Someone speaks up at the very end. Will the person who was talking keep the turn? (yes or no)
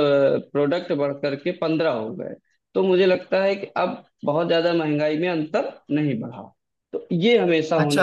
no